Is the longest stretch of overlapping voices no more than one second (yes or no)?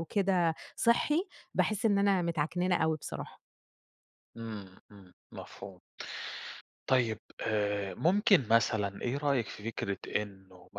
yes